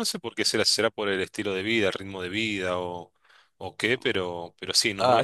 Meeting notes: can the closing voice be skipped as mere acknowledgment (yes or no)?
no